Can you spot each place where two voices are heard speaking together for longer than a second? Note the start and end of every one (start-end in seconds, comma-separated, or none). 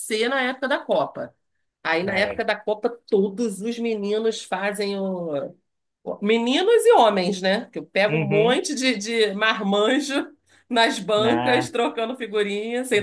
none